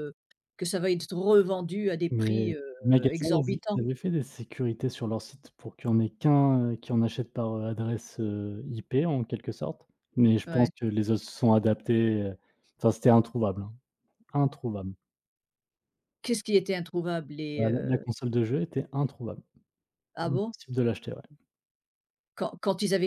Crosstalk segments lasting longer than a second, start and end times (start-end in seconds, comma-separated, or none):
2.1-3.8